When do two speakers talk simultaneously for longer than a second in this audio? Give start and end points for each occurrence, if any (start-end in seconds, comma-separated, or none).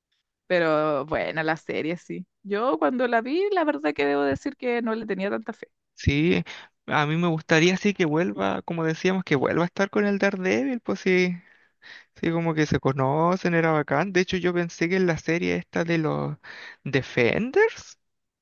none